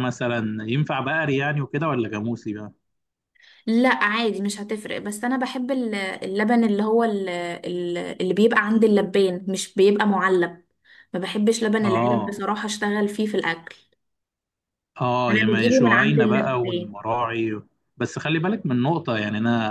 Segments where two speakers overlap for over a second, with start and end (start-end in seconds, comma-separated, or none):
15.3-17.0